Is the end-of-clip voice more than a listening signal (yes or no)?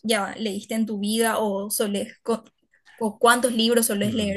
yes